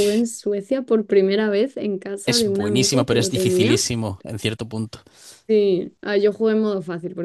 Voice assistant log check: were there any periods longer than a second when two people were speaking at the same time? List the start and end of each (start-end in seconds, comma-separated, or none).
2.2-3.8